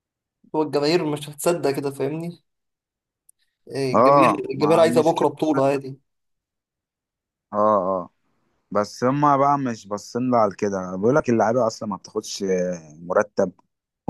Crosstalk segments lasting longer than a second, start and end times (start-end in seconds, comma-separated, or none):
3.9-5.6